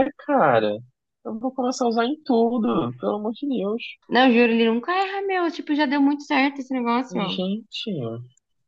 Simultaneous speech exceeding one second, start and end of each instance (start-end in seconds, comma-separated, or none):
none